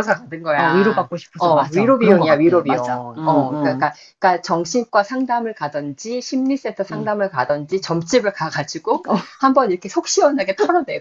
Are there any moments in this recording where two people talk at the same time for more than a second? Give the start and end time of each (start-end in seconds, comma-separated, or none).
0.6-3.8